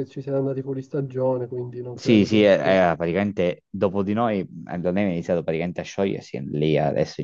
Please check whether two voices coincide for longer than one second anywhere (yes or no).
no